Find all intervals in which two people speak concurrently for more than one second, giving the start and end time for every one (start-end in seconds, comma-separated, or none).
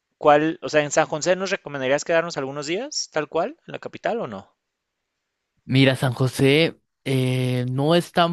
none